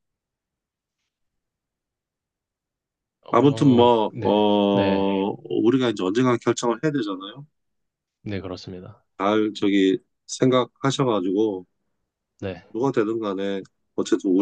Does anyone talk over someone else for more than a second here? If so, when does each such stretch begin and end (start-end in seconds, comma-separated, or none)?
3.3-5.2